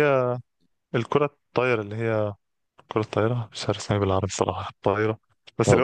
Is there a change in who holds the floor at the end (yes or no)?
no